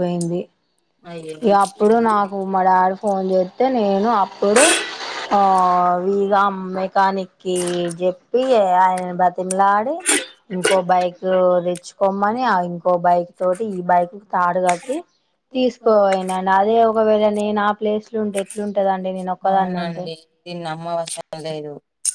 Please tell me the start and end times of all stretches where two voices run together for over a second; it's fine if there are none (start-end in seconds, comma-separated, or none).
none